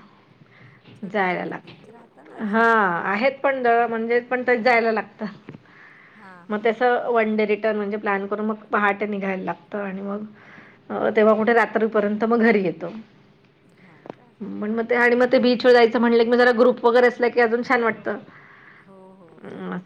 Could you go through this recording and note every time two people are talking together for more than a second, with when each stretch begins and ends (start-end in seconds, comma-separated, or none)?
1.1-2.6